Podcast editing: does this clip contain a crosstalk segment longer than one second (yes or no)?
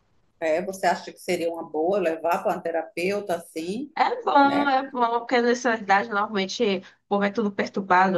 no